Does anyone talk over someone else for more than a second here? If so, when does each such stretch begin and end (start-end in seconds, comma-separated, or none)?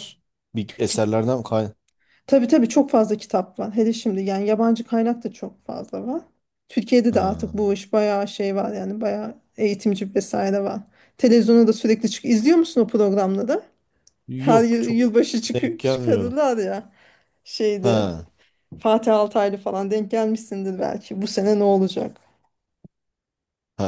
14.4-16.4